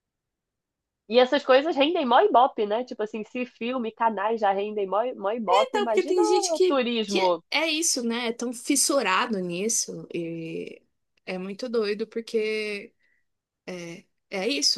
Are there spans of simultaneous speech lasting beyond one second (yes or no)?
yes